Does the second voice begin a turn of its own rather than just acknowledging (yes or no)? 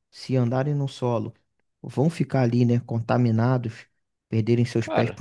no